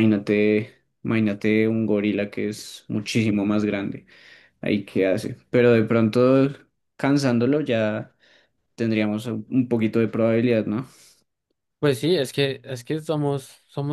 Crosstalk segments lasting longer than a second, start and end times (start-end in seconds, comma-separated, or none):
none